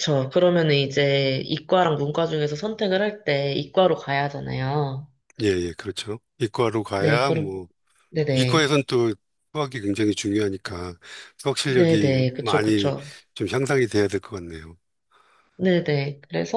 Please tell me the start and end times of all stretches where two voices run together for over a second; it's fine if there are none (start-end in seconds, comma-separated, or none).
11.7-12.9